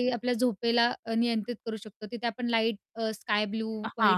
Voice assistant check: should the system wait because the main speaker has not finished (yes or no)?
no